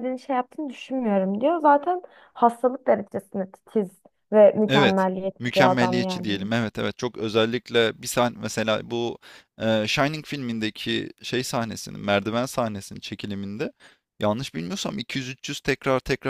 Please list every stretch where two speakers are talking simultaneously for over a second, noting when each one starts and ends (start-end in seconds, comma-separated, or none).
4.7-6.5